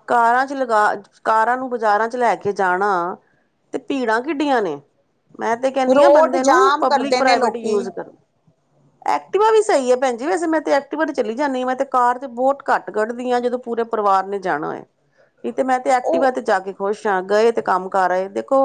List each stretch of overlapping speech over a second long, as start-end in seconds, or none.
5.9-7.8